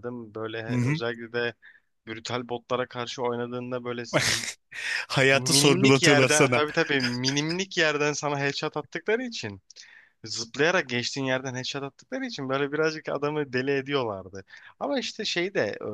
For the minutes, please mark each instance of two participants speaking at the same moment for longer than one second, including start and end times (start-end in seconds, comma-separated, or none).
5.3-6.6